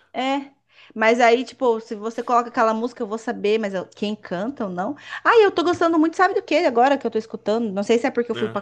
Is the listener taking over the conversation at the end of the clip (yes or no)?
no